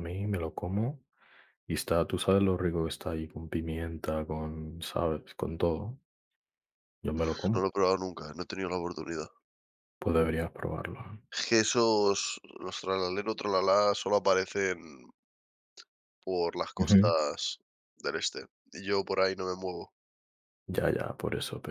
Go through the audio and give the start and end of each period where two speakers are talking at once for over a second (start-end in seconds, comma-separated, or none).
none